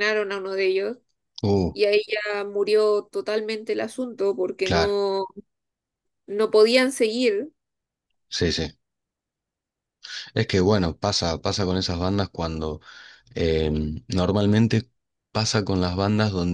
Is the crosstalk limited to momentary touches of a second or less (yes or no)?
yes